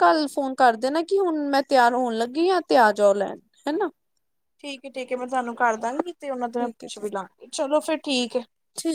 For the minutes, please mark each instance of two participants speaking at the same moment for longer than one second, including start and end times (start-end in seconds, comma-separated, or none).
none